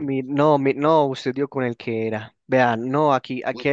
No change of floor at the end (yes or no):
yes